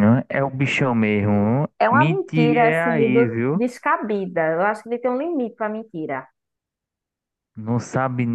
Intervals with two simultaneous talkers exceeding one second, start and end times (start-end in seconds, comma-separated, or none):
1.8-3.6